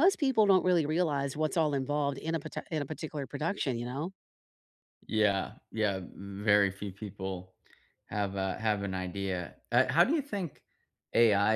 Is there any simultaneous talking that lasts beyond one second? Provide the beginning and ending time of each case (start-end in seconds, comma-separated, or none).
none